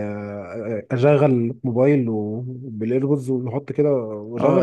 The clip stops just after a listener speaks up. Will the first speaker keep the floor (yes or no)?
no